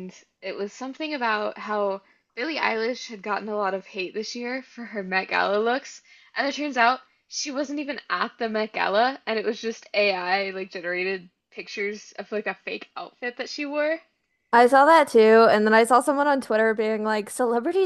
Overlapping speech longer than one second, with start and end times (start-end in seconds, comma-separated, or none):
none